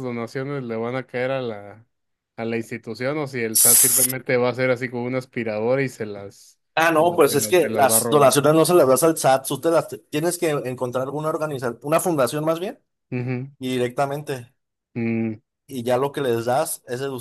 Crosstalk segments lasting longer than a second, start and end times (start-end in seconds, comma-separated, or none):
7.0-8.3